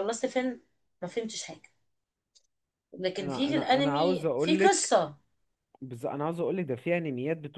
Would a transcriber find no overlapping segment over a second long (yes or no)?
no